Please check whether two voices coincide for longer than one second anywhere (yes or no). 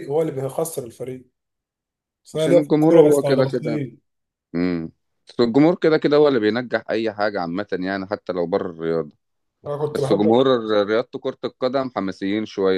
yes